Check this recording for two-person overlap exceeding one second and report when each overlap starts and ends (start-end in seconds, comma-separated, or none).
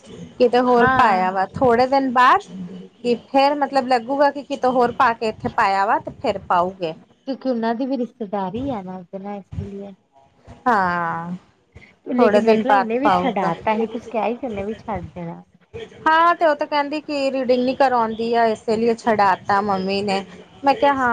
12.2-13.5